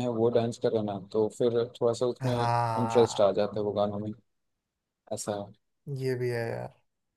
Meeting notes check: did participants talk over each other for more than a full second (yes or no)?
yes